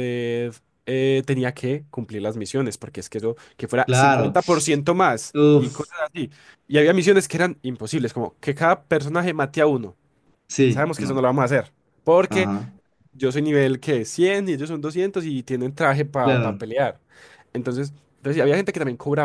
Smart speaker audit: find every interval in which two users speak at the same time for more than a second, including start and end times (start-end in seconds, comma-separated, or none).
none